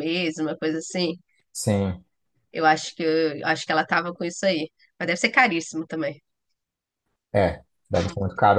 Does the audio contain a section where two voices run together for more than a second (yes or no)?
no